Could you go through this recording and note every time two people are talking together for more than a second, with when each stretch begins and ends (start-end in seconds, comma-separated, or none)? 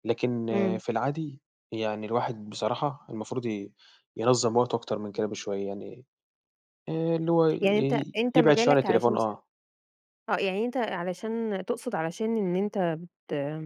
7.6-9.4